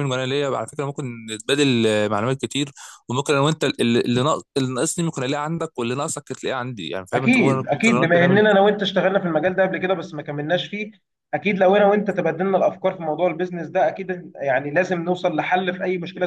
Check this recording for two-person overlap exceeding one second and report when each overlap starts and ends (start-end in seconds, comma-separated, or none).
7.1-8.4